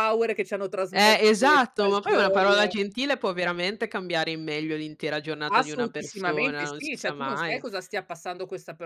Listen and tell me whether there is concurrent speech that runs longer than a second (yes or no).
yes